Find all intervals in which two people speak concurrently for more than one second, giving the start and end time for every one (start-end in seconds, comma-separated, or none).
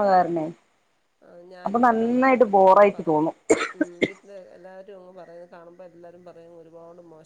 1.6-3.4